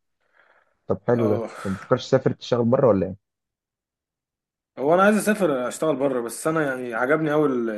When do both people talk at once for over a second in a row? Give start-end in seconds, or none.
none